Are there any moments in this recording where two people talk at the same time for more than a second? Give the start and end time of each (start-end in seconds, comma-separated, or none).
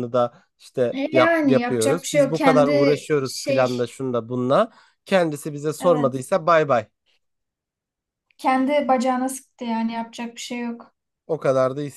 0.9-3.8